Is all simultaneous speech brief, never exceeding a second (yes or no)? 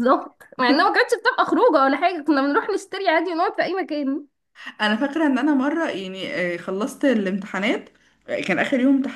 yes